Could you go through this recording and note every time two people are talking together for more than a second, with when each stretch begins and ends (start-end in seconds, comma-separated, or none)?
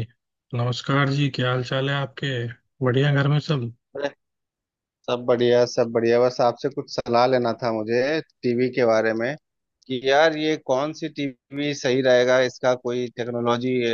none